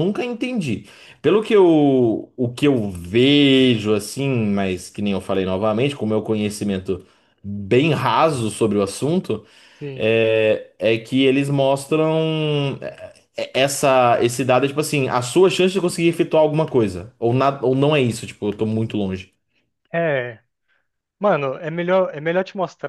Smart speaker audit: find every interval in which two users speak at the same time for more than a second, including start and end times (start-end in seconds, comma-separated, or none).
none